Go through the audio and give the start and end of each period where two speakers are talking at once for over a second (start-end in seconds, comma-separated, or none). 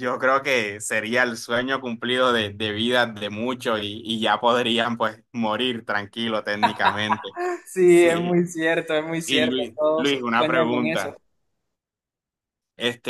9.2-11.2